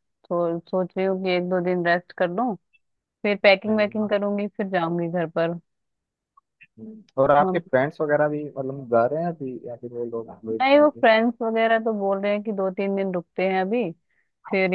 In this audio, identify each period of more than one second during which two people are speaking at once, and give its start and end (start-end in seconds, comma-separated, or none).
none